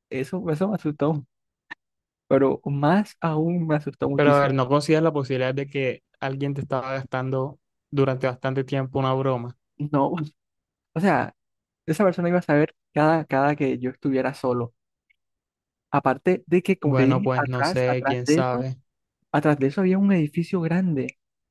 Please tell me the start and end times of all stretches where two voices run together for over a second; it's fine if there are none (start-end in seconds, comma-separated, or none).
16.8-18.7